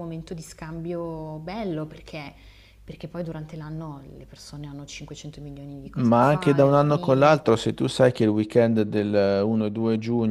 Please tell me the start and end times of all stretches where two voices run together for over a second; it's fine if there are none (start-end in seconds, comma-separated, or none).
5.9-7.4